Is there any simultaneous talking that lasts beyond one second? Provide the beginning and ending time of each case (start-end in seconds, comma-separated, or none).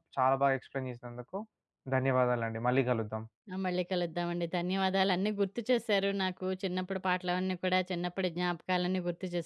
none